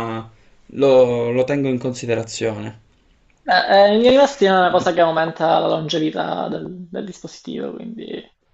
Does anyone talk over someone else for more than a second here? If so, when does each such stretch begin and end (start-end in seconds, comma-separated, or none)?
none